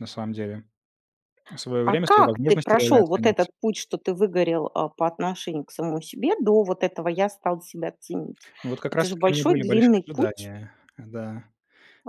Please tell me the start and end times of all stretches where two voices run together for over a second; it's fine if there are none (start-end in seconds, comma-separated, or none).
1.9-3.5, 8.9-10.5